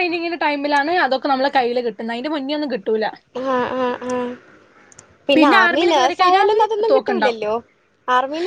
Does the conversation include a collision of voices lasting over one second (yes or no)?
yes